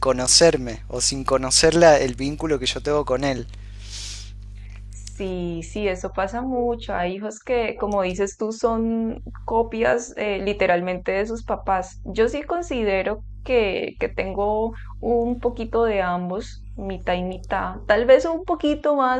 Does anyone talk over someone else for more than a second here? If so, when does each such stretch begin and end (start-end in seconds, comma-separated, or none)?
none